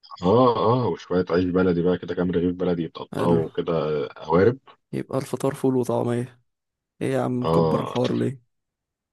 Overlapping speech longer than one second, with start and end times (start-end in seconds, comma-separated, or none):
none